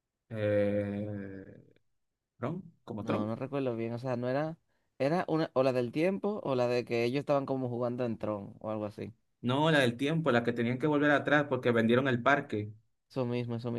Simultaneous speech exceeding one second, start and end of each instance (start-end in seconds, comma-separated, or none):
none